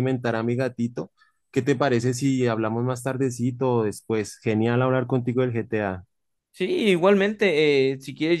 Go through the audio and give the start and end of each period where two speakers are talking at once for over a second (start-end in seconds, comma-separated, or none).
none